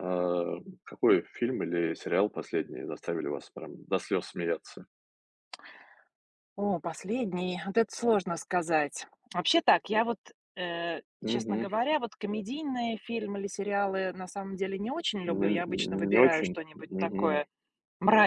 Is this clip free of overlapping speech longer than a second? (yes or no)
no